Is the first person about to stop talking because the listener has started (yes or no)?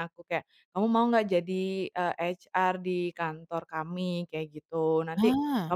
no